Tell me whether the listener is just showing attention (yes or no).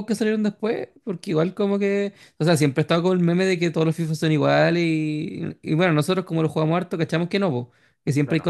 yes